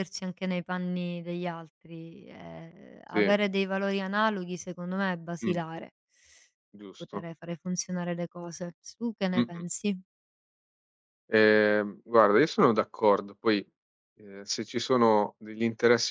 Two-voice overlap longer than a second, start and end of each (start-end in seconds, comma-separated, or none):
none